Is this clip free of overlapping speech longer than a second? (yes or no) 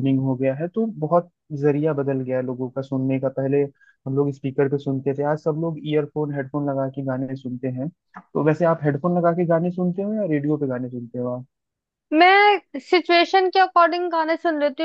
yes